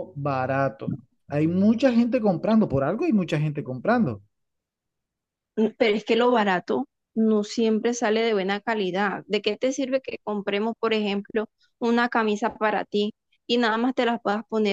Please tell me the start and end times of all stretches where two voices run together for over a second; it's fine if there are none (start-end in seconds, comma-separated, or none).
none